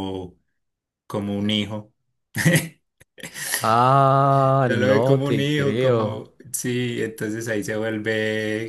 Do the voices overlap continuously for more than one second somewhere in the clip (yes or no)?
yes